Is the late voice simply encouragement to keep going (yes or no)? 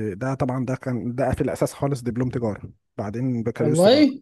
yes